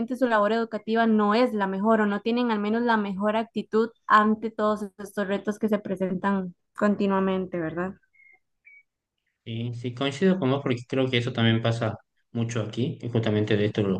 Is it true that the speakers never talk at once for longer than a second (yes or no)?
yes